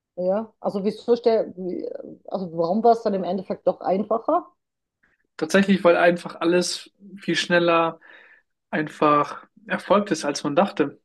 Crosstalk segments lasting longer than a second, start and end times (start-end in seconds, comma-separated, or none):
none